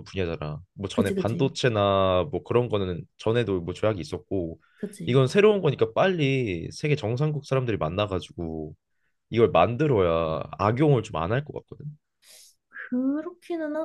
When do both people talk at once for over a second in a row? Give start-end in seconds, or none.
none